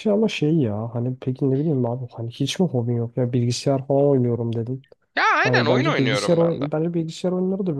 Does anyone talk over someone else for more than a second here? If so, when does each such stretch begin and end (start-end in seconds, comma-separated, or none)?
5.4-6.7